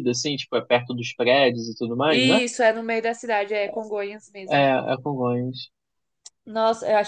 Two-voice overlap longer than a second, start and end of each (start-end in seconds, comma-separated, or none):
none